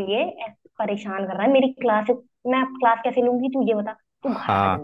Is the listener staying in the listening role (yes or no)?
no